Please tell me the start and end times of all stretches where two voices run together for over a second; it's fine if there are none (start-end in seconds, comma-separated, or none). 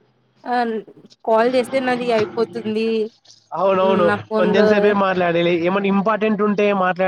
none